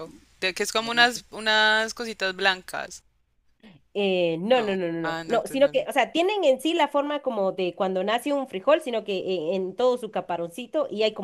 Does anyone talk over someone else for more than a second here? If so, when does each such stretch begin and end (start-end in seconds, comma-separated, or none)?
4.5-5.9